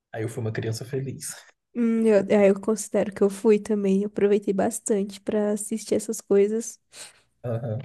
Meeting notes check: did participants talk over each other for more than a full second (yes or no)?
no